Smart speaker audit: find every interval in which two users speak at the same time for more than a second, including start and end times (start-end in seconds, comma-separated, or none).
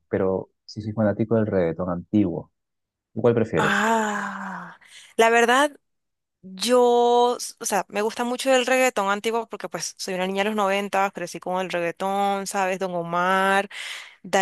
none